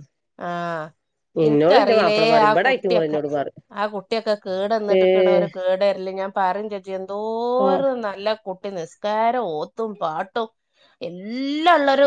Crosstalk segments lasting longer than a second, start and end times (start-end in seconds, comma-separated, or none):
1.4-3.2